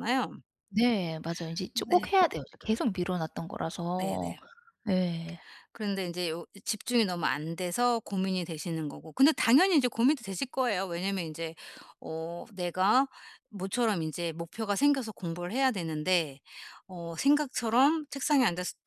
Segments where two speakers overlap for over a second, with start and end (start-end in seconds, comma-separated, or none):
none